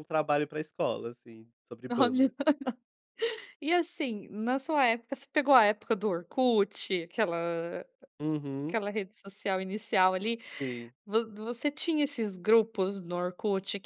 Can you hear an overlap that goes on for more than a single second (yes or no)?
no